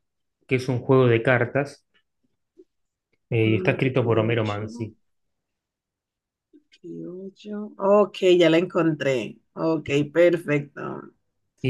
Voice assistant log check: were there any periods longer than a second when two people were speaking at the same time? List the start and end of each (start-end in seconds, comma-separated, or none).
3.5-4.7